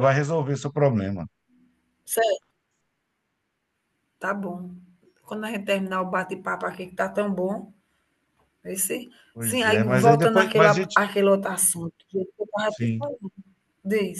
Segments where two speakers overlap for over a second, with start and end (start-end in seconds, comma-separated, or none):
9.3-11.0